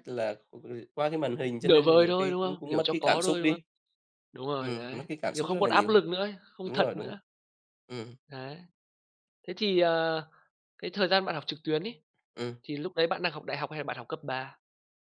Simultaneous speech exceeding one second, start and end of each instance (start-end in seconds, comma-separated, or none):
1.6-3.6, 4.6-6.0